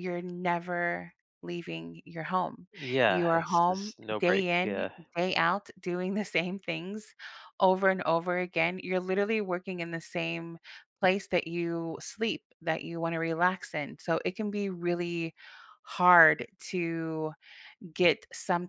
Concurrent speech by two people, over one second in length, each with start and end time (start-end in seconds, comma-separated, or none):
3.1-4.8